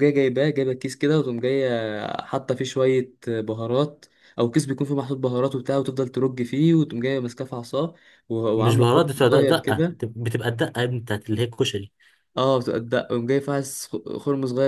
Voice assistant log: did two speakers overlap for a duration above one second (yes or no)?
yes